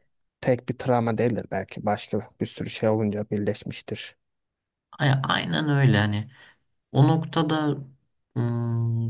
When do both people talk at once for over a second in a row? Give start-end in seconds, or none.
none